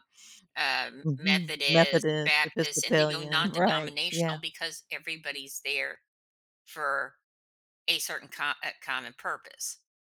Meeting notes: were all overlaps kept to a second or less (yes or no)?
no